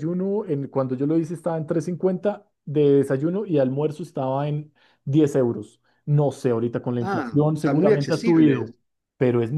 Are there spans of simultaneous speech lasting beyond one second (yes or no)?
yes